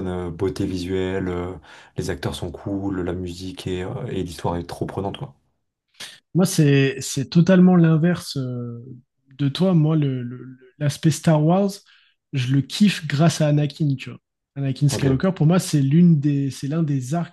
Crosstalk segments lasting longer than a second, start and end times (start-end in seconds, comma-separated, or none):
none